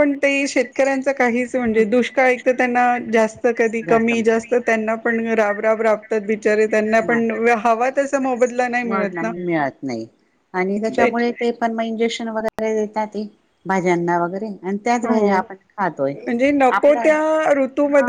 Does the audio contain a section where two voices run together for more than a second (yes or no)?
no